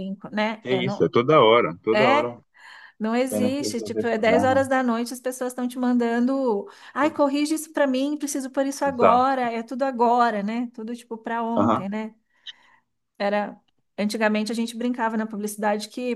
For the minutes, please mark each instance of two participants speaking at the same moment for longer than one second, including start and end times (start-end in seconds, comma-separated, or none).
3.3-4.6